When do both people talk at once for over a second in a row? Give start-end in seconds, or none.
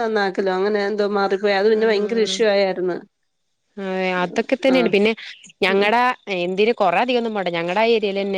none